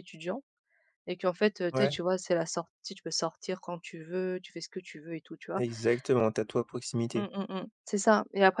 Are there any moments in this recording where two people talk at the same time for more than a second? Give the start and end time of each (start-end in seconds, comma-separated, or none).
none